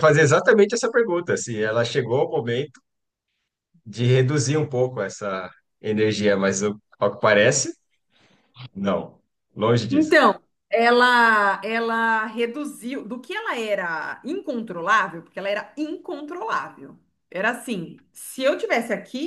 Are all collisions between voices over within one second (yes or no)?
yes